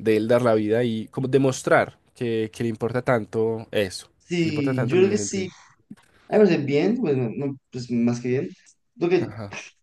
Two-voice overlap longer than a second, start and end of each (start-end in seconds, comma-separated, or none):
4.2-5.5